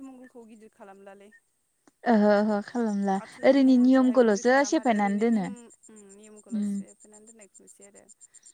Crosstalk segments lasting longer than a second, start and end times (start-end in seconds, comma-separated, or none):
3.2-5.4